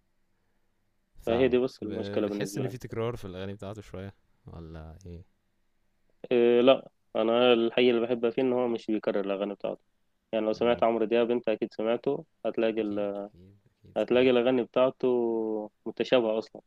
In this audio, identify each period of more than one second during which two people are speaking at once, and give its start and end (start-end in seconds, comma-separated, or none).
1.3-2.8